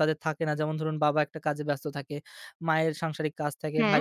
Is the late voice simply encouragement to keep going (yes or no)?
yes